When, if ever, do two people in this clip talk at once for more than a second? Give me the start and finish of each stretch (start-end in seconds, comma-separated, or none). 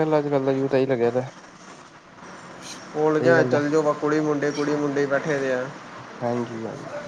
none